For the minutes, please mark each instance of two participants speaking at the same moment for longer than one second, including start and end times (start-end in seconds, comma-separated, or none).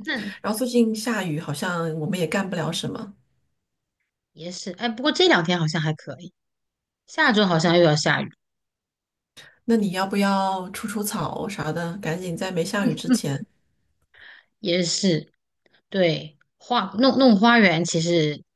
none